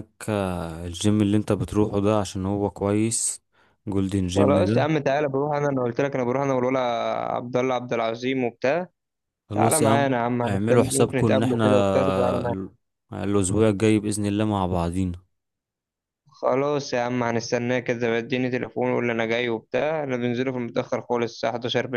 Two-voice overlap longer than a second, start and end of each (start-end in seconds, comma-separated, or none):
9.5-12.6